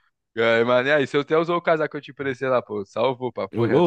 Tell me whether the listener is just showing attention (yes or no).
no